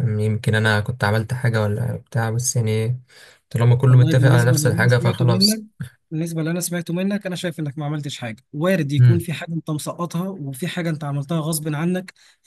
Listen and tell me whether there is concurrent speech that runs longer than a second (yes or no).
yes